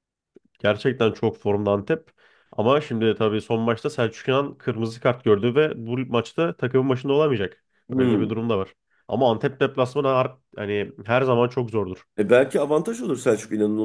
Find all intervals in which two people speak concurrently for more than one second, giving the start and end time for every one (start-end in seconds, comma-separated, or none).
none